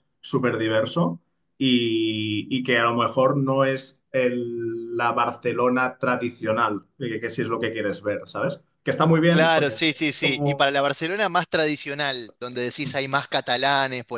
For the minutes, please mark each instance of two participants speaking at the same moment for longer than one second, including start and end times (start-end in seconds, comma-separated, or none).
9.3-10.8